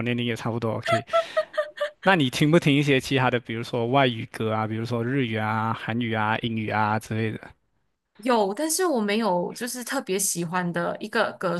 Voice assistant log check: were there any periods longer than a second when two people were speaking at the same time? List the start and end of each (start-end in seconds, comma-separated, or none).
none